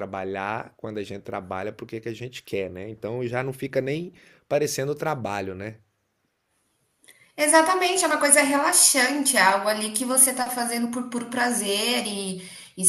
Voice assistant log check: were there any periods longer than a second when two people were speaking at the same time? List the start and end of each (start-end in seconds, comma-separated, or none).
none